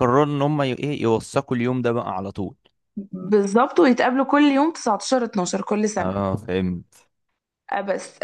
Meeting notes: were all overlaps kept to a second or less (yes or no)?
yes